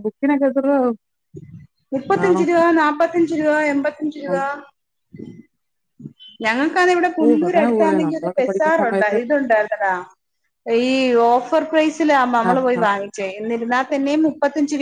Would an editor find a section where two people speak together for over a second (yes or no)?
yes